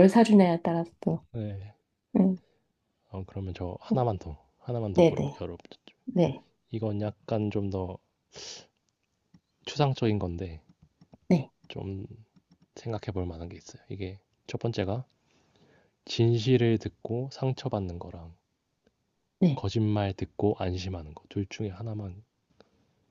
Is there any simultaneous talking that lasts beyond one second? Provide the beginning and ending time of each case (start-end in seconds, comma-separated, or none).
none